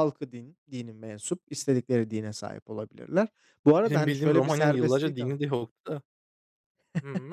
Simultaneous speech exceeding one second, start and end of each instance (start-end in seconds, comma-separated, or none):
3.9-5.4